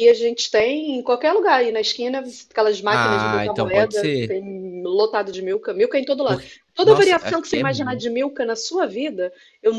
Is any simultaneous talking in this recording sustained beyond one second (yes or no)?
yes